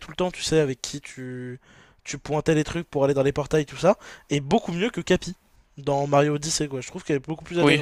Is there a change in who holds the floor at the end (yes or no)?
yes